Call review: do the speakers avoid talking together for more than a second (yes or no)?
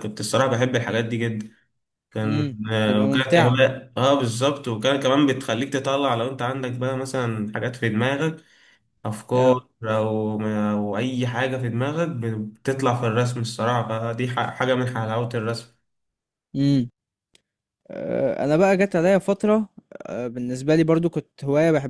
no